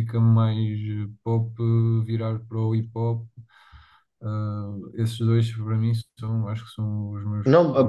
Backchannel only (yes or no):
no